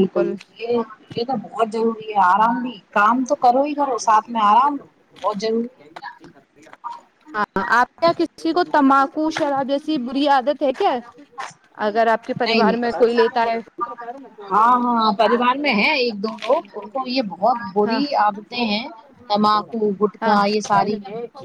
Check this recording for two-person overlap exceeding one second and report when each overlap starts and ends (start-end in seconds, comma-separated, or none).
none